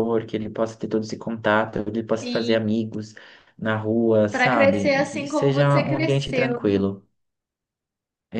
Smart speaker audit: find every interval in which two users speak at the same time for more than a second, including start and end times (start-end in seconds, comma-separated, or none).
4.3-6.9